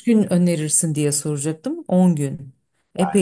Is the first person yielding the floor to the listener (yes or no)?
yes